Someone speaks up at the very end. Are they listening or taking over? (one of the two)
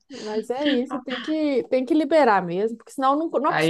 taking over